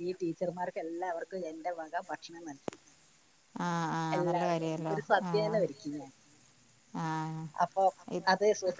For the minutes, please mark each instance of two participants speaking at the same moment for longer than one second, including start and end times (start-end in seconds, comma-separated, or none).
4.2-5.9